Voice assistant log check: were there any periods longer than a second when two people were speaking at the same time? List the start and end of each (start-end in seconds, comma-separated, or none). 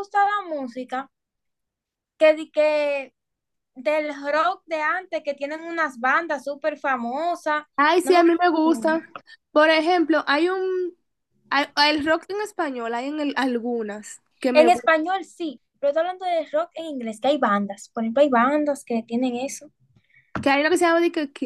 none